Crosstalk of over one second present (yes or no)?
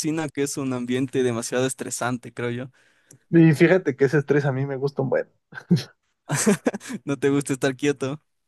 no